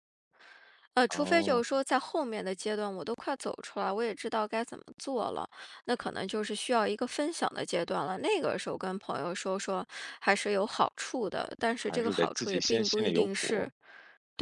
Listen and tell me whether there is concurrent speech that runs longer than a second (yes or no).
yes